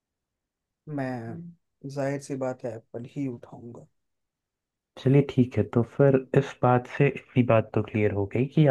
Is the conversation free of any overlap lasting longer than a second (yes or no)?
yes